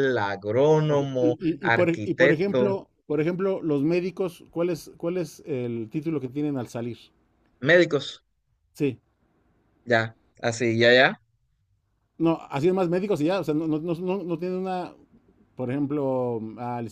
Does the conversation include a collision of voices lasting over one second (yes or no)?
yes